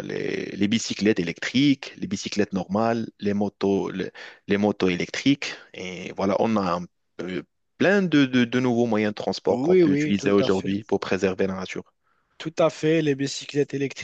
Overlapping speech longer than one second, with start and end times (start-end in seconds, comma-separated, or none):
9.5-10.7